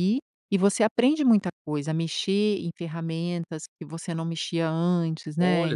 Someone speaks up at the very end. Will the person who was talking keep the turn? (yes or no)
no